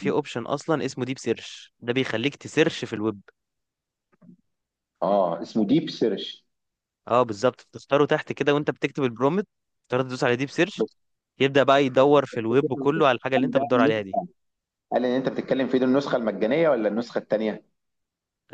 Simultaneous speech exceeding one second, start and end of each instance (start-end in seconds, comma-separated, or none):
none